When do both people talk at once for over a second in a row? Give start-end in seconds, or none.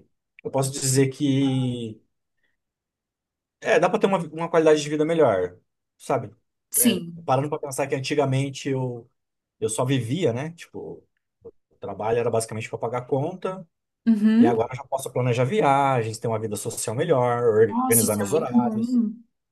17.7-19.0